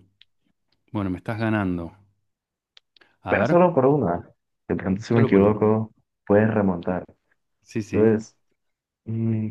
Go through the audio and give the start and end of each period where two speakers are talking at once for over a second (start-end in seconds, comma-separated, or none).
none